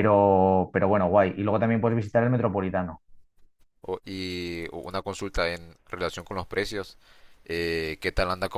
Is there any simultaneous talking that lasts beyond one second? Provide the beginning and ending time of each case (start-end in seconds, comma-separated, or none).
none